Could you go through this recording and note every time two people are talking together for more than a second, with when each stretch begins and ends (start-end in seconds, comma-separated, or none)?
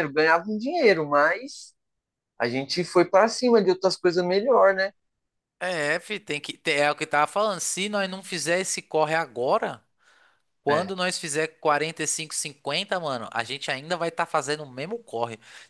none